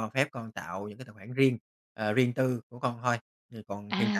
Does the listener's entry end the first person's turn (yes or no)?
yes